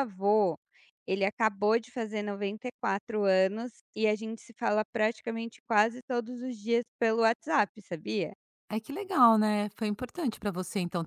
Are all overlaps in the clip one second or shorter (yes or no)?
yes